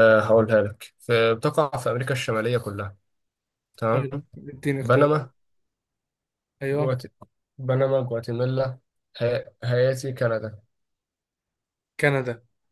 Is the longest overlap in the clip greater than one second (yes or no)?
no